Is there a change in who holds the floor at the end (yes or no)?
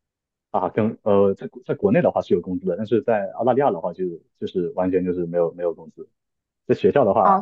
no